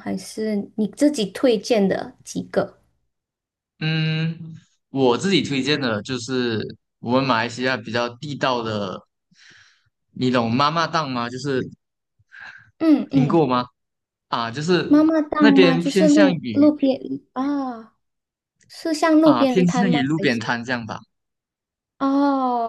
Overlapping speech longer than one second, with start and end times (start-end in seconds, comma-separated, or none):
14.9-16.7, 19.2-20.6